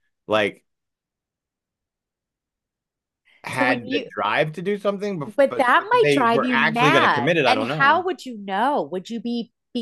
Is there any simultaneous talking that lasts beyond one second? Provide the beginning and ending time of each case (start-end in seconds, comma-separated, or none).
5.2-8.0